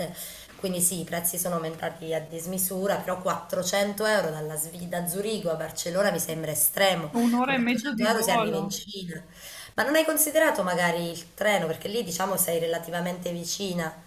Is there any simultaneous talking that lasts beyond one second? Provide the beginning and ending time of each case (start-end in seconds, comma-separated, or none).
7.1-8.9